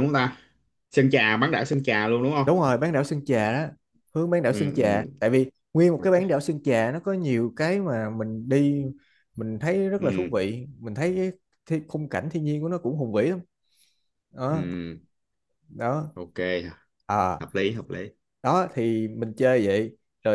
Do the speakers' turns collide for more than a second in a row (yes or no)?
no